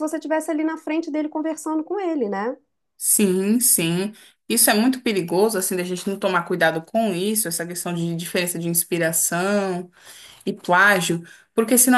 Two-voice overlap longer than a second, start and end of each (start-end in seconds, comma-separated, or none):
none